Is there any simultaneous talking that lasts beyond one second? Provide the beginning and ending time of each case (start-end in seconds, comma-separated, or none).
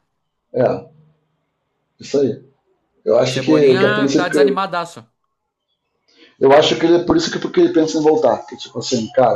3.2-4.7